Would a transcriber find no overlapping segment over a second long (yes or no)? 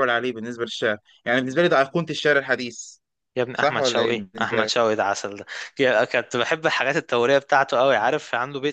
no